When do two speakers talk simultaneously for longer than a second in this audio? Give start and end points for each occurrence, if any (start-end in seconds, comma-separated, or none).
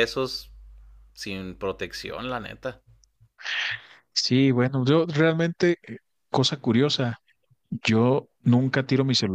none